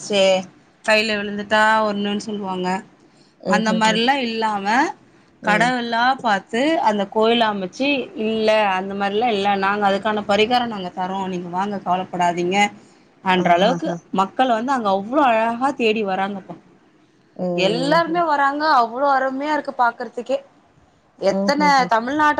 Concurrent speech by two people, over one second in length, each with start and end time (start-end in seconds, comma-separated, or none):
none